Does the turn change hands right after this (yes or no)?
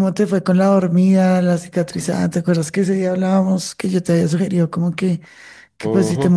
no